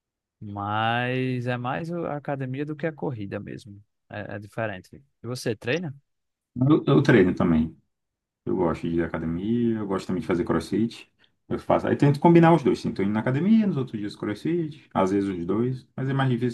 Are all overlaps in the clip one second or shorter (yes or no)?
yes